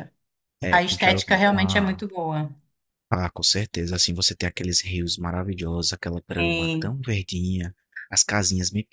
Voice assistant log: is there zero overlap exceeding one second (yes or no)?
no